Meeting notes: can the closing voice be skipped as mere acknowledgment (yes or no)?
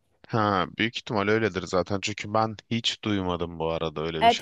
no